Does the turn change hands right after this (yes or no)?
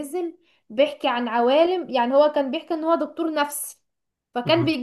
no